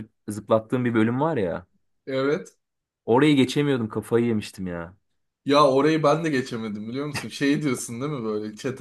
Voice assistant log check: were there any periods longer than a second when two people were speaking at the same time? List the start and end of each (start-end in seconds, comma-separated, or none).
none